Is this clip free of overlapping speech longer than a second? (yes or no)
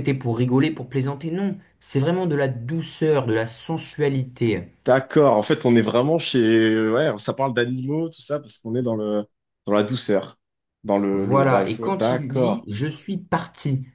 no